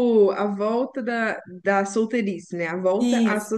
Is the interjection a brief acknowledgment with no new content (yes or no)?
no